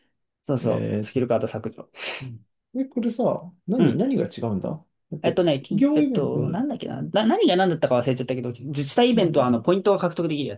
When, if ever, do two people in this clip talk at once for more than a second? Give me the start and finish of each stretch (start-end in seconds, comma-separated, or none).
5.2-6.7